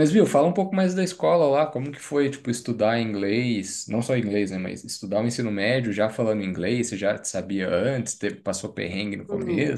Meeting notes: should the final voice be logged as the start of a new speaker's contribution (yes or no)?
yes